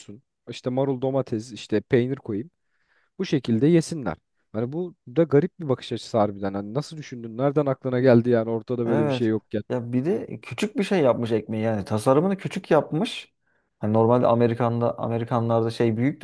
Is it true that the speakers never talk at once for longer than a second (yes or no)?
yes